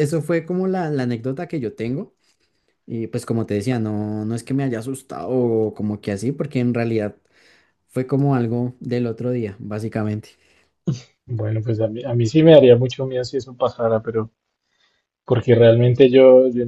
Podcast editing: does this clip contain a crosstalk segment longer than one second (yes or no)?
no